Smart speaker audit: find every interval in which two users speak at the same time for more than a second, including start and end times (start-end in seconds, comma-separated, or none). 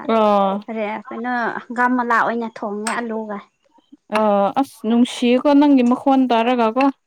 none